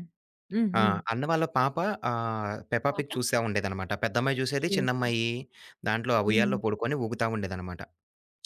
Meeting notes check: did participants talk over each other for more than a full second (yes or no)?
no